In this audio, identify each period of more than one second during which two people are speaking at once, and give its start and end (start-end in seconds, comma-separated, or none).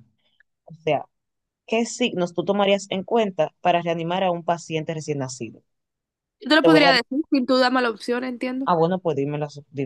none